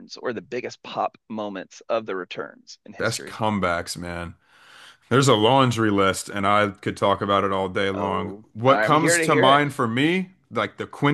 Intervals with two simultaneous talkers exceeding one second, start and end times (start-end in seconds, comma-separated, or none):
7.9-9.6